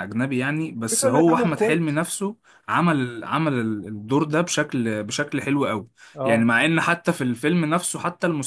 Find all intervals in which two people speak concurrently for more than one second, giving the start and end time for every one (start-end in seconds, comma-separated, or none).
0.8-2.0